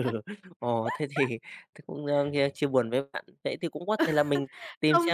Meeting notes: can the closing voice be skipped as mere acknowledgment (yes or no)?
yes